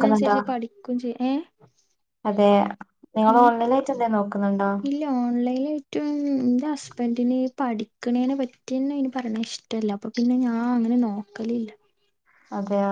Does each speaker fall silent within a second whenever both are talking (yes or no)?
yes